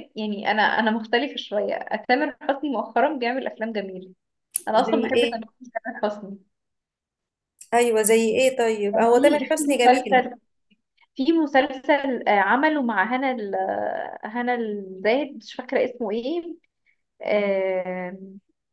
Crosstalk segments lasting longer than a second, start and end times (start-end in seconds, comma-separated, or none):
8.9-10.2